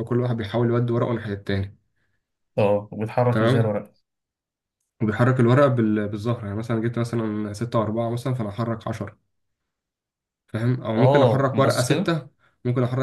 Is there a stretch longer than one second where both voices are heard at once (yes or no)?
yes